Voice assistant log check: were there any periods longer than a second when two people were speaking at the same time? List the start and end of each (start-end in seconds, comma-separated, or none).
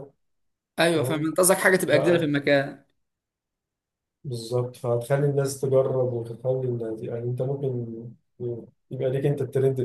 none